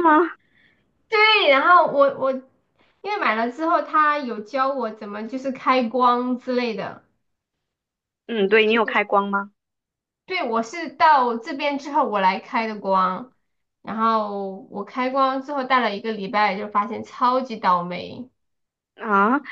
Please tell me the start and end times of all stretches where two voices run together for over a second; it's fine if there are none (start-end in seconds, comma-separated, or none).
none